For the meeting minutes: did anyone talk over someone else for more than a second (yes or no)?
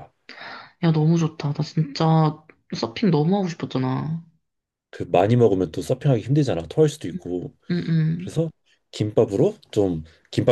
no